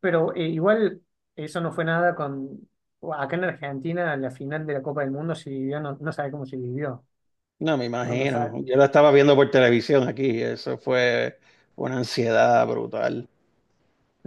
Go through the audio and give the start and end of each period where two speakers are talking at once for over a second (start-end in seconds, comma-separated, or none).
none